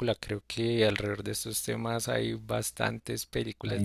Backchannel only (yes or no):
no